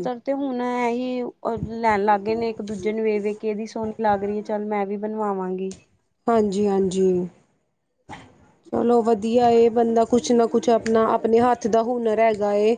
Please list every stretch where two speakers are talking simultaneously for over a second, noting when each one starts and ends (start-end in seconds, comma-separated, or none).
none